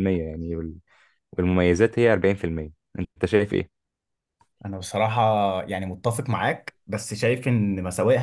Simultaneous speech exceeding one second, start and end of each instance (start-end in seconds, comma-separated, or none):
none